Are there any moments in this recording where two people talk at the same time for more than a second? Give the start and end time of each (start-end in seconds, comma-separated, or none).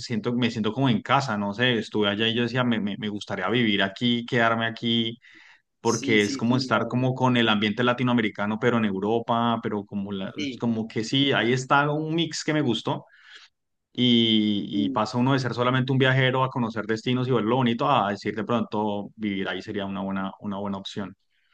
5.8-7.1